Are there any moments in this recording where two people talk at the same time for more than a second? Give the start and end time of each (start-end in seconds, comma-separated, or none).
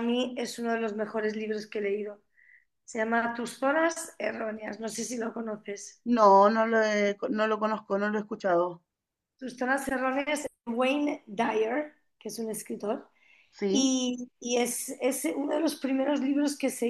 none